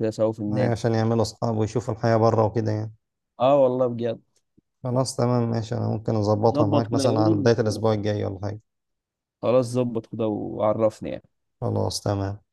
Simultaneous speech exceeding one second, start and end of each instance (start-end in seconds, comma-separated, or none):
6.5-7.8